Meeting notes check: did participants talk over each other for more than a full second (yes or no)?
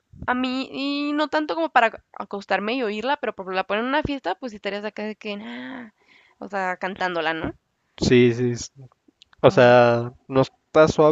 no